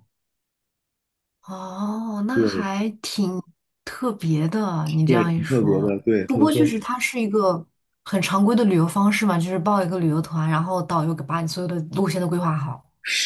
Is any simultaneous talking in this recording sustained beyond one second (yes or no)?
yes